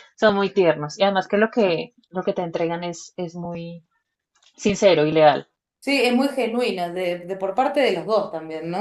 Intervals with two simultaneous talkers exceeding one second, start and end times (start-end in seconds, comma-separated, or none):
none